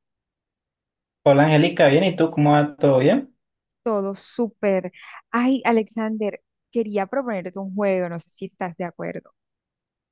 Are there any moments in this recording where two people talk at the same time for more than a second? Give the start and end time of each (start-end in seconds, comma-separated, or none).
none